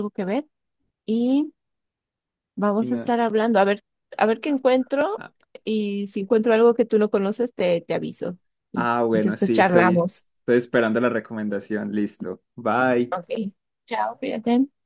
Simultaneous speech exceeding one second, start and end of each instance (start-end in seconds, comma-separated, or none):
8.7-10.2